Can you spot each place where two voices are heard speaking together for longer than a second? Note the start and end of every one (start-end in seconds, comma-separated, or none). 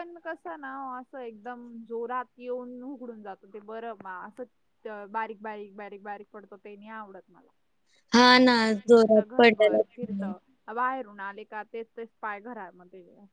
8.4-10.2